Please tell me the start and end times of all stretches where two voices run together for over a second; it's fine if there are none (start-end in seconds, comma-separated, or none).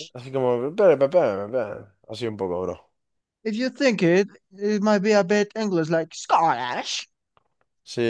none